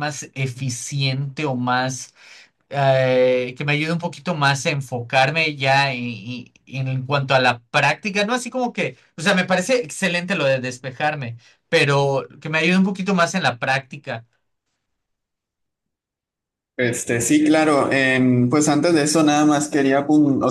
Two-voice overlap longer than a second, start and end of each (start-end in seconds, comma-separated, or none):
none